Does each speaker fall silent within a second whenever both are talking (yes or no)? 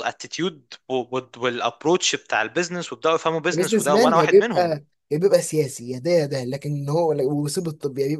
no